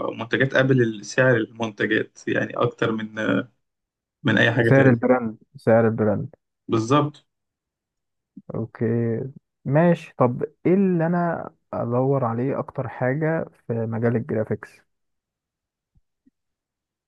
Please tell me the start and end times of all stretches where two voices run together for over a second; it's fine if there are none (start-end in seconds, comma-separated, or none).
none